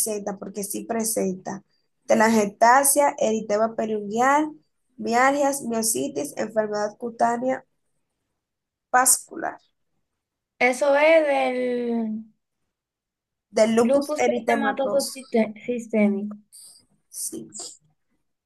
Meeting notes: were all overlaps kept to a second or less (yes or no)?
no